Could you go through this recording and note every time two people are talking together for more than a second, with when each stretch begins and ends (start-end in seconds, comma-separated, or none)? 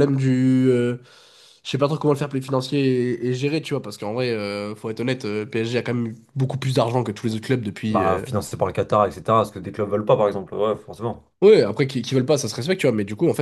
none